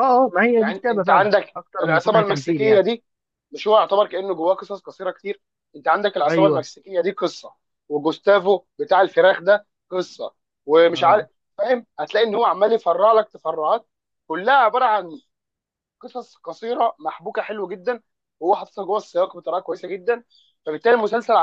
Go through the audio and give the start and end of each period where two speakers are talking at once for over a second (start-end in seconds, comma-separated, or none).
0.5-2.8